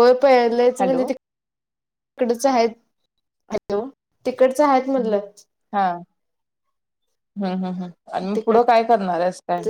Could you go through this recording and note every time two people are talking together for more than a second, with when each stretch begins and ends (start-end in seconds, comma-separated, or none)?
none